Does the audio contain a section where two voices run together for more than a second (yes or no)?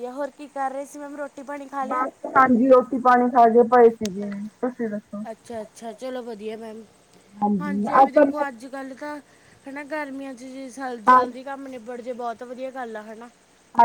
no